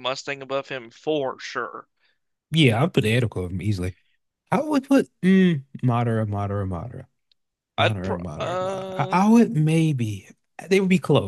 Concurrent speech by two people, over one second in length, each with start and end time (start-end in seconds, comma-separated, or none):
7.8-9.2